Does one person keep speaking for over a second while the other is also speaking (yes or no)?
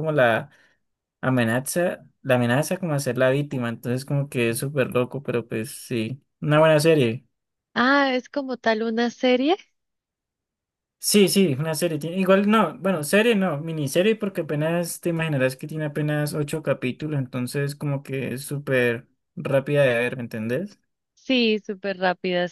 no